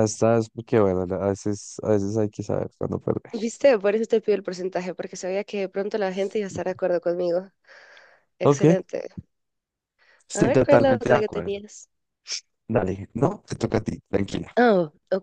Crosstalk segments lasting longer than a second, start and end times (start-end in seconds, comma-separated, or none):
10.3-11.6